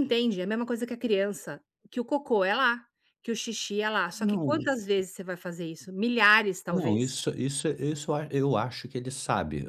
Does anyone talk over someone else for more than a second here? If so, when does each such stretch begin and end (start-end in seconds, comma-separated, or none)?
none